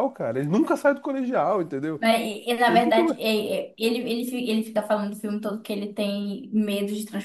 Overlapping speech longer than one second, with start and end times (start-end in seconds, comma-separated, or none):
none